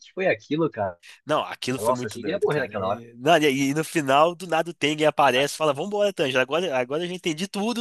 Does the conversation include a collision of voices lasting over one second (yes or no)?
yes